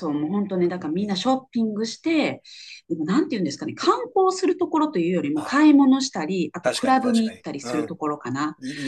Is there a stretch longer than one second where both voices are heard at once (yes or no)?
yes